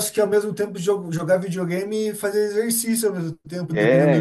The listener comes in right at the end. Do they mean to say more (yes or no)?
yes